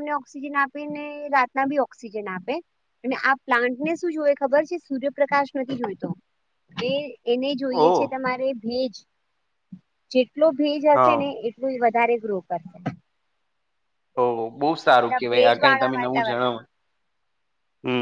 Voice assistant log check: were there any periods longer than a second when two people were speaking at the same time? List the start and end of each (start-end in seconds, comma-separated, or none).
14.9-16.6